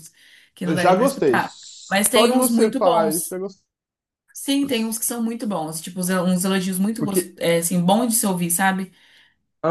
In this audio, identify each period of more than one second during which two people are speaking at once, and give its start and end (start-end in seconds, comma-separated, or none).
0.6-3.3